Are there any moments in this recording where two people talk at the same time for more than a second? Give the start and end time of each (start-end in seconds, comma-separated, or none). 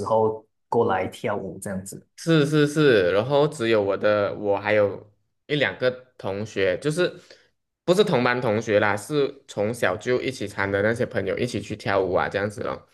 none